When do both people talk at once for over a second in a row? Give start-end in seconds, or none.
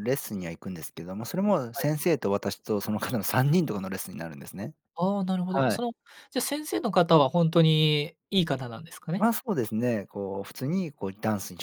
none